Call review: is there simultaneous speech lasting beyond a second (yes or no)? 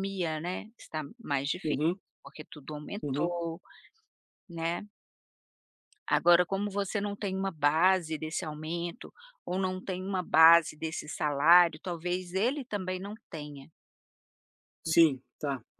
no